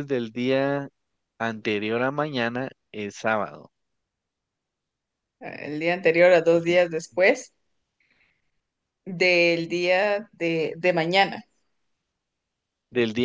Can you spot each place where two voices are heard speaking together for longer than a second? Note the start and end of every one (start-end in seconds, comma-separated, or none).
none